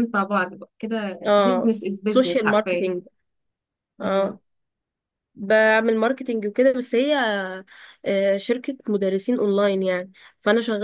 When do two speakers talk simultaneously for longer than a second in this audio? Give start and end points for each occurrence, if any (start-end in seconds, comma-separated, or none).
1.3-2.9